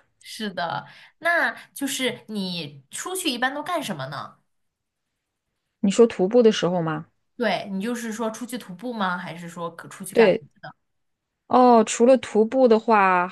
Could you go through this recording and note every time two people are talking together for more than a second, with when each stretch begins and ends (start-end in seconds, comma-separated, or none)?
none